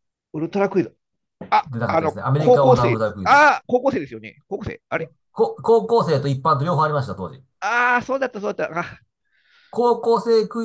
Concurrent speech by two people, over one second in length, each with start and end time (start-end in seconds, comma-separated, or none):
1.7-3.4